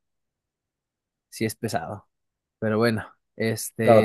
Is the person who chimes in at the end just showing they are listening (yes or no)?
no